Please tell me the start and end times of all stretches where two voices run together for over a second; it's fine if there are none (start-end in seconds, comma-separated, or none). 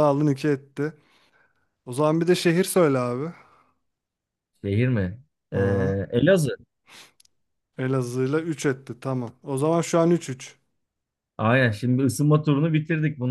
none